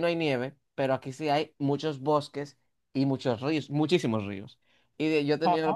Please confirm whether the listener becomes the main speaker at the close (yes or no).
no